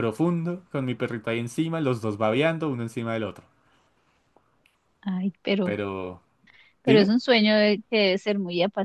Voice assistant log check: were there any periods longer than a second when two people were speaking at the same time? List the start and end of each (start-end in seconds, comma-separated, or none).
none